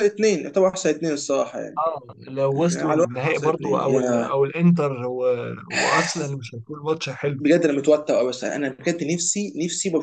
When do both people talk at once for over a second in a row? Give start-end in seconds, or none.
2.5-4.2